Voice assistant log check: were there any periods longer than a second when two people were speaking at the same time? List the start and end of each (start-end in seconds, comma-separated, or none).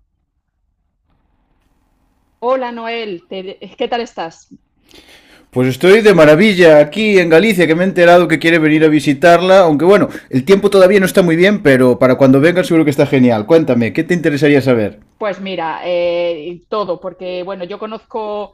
none